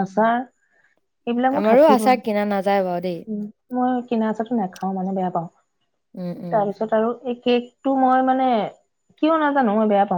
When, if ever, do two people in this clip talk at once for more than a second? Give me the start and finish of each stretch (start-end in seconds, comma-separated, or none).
1.6-3.2